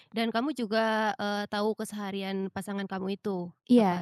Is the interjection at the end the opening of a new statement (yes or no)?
yes